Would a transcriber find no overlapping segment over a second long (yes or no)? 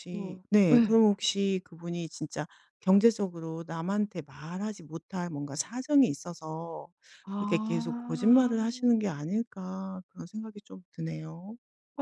no